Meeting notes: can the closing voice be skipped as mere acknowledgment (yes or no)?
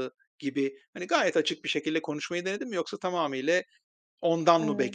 yes